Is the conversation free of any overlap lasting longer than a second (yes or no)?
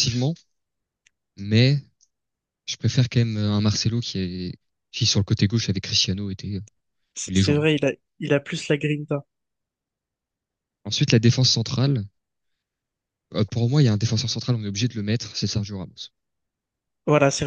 yes